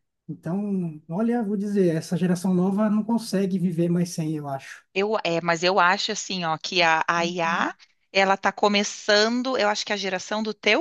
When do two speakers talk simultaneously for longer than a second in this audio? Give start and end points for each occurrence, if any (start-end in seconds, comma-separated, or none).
none